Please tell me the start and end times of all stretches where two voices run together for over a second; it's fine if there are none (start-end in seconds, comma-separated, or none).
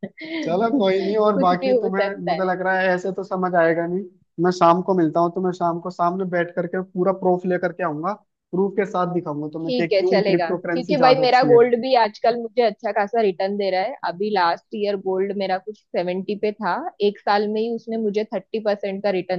0.7-2.5, 9.6-11.6